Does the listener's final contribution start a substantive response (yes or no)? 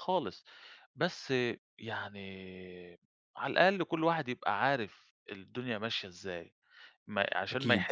no